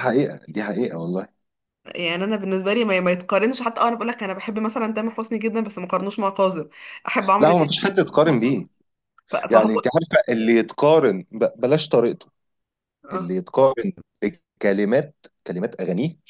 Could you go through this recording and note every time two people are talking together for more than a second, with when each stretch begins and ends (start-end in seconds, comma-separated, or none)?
7.4-8.6